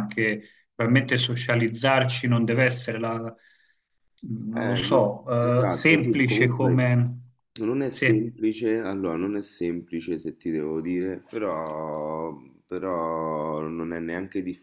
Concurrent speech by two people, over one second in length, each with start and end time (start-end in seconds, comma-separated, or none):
4.5-6.9